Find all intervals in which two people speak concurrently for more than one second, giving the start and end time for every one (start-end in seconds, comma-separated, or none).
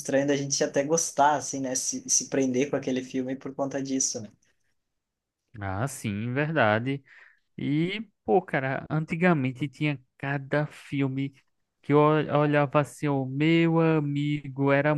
none